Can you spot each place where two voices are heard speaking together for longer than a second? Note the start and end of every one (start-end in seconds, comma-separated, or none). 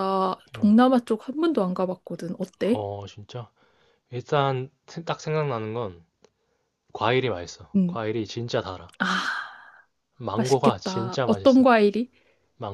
10.3-11.7